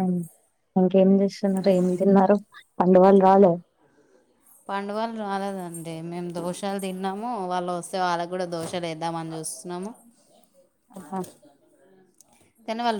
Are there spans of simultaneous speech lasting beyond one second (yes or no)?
no